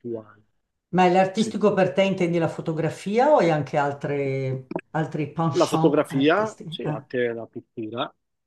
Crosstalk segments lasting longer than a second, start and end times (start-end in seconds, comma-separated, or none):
5.6-7.1